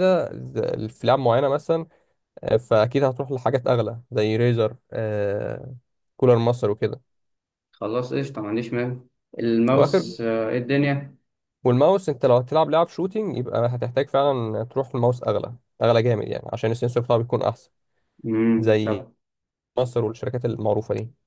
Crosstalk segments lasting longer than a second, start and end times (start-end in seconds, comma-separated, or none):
none